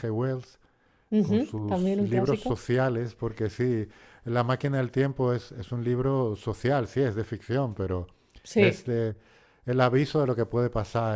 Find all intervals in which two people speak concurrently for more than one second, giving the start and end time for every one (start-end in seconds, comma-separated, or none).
1.2-2.6